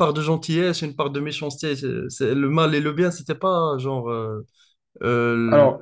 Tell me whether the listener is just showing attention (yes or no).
yes